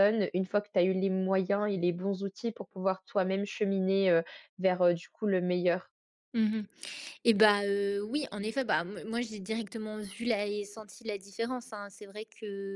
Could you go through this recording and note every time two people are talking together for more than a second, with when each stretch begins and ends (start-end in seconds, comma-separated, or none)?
none